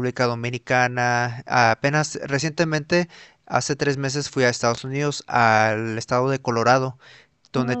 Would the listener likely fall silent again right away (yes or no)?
yes